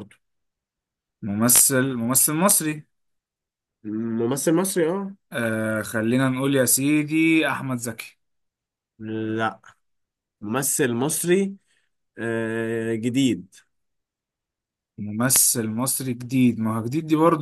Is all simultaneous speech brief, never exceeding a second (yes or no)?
yes